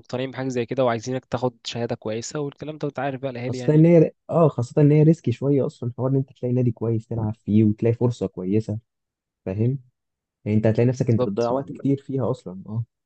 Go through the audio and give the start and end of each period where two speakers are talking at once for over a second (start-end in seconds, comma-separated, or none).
none